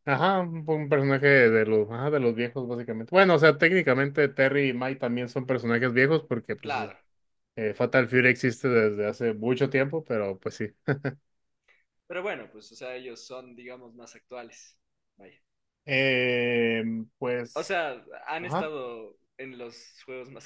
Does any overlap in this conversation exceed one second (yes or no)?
no